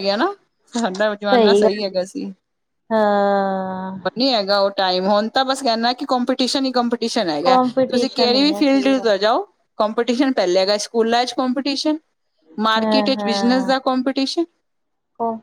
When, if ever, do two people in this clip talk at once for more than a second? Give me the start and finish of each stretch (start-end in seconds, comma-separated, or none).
7.5-9.1